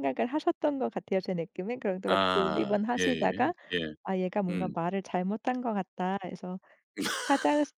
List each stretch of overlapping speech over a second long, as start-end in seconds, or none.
2.1-3.5